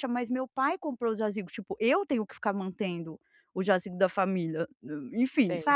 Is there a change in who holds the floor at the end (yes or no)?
yes